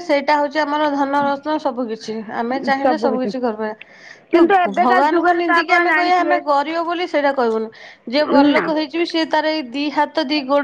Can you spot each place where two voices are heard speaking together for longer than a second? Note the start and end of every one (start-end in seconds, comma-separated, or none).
4.3-6.4